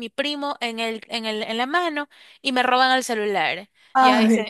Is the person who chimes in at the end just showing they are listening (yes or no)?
yes